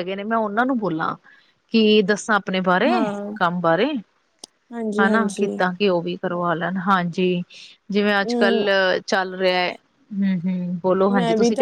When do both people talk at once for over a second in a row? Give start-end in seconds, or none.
none